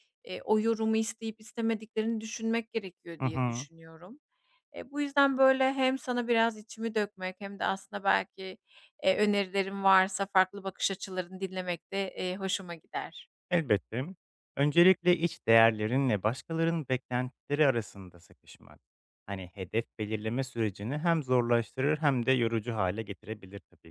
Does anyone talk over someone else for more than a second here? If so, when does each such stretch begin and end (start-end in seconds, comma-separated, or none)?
none